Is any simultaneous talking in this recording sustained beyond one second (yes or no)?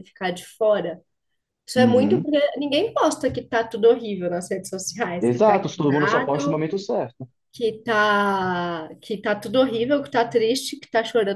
yes